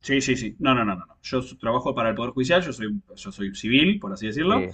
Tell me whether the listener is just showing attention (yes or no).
yes